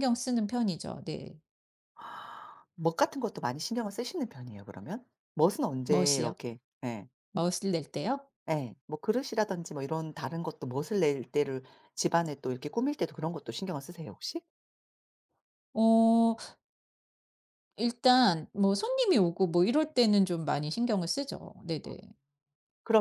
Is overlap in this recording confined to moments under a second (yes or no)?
yes